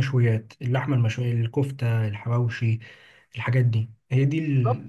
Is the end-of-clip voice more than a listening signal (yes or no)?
yes